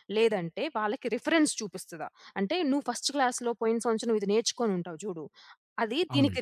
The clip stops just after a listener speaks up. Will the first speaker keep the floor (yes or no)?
yes